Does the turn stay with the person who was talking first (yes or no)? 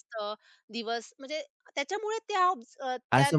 no